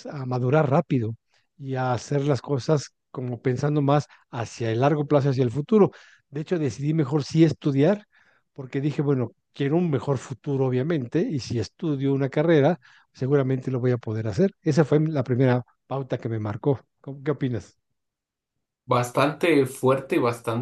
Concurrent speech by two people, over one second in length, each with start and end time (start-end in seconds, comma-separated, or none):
none